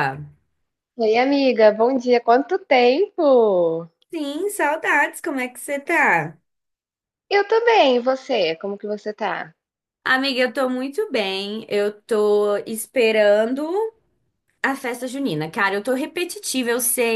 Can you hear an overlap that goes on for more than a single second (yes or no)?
no